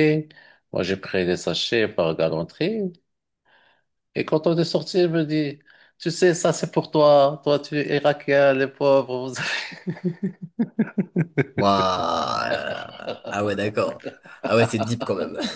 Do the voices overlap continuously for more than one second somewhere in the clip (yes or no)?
no